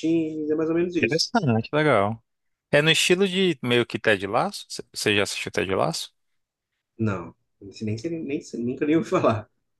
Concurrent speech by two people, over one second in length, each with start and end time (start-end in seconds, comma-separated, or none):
none